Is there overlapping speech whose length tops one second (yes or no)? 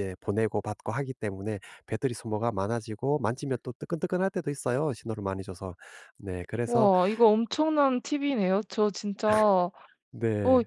no